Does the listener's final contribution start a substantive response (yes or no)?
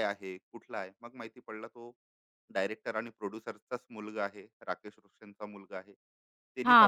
yes